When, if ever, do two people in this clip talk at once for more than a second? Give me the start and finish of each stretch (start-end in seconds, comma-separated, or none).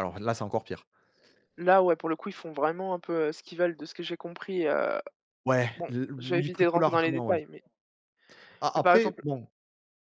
5.8-7.4